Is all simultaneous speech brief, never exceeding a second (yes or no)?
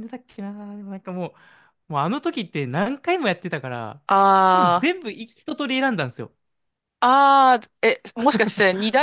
yes